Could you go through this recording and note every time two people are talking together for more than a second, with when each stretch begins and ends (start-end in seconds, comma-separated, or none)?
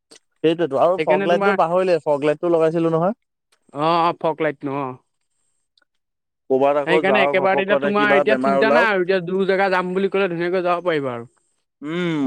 6.9-8.9